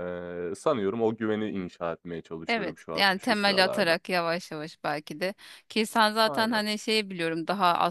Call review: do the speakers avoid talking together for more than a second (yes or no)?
no